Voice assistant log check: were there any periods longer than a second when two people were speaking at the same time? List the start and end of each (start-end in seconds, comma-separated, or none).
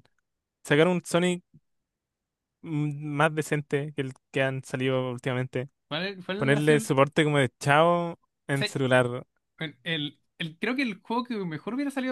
none